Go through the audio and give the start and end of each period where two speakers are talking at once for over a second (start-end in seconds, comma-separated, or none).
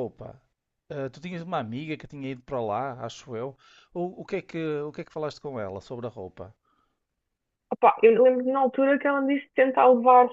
none